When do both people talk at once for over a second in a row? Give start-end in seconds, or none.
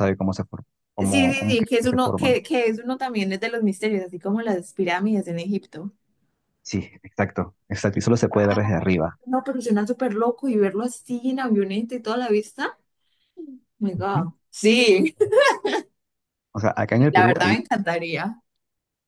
1.0-2.4